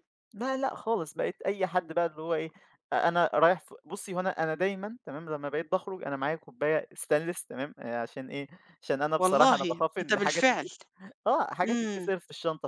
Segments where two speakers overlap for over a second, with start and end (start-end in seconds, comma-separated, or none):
9.2-10.7